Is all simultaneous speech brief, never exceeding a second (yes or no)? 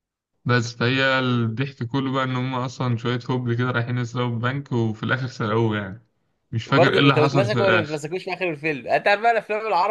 no